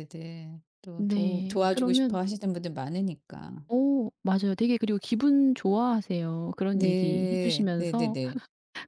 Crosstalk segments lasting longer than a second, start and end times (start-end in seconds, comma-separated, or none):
1.0-2.2, 6.7-8.2